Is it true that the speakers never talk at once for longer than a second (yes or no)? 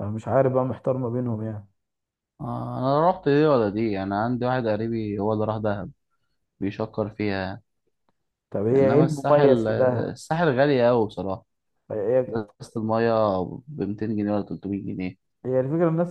no